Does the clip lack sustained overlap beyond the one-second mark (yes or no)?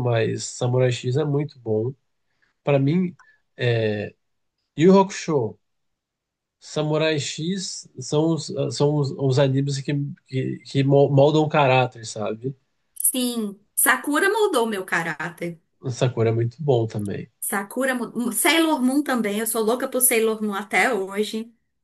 yes